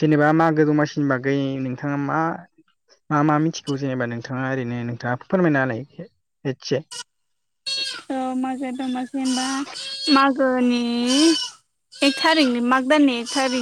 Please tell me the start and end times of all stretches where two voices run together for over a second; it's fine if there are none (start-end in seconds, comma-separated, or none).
none